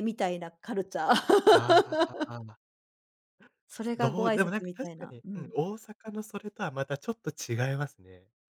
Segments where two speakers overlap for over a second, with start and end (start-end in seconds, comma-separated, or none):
4.0-5.5